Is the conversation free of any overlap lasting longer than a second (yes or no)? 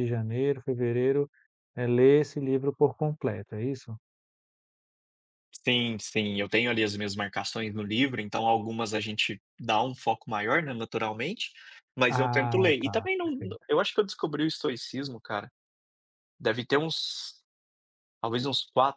no